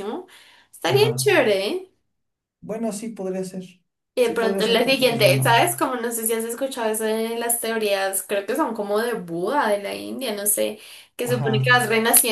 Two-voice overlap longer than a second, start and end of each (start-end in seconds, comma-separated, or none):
4.2-5.6